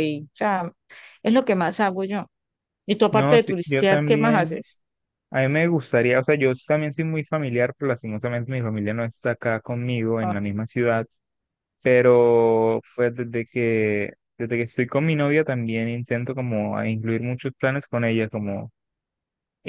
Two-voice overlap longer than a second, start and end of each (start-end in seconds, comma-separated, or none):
3.1-4.6